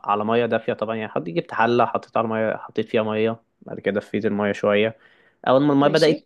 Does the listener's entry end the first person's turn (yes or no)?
no